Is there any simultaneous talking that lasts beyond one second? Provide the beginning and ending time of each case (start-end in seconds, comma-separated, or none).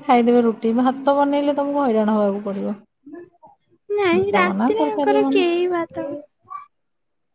4.1-5.7